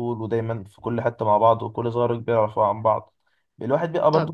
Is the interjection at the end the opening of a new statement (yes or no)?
no